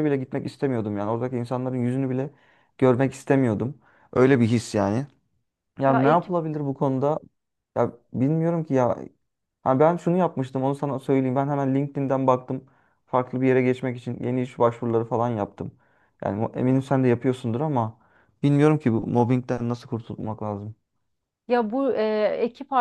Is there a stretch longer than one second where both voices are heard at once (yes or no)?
no